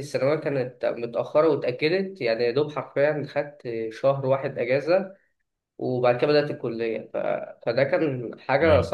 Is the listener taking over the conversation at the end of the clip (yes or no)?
no